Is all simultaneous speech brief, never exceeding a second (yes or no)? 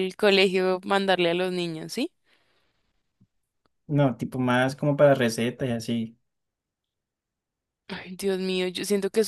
yes